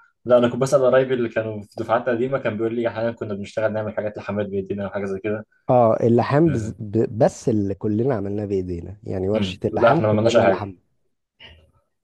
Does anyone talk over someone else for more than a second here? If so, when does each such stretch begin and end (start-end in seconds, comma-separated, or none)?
9.3-10.7